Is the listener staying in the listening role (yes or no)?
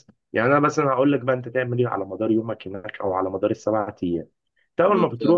yes